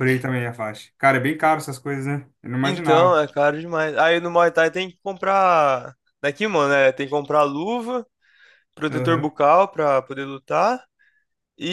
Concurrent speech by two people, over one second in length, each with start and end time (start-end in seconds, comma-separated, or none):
none